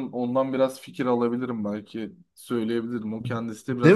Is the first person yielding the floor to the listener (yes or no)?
yes